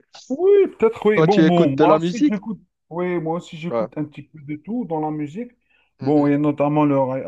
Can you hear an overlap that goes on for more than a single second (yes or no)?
yes